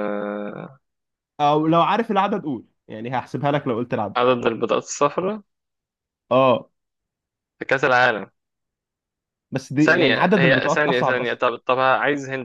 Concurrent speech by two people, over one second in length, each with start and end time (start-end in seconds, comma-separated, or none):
9.8-11.4